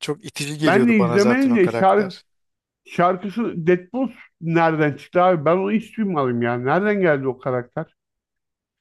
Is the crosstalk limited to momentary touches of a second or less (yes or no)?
no